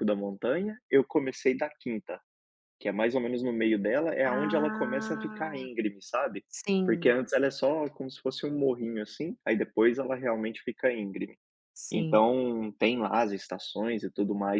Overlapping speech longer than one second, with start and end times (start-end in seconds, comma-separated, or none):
4.2-5.7